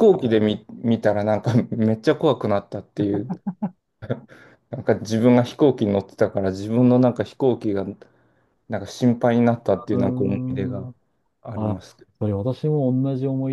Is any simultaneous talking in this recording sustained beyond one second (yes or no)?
yes